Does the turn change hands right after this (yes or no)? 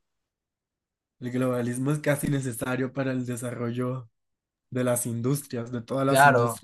yes